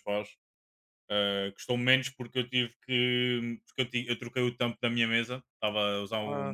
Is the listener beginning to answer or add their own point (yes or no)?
no